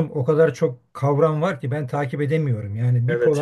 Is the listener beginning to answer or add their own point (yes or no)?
no